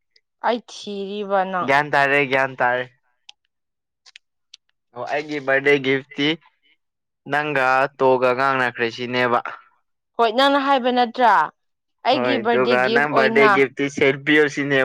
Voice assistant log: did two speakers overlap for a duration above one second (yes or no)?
yes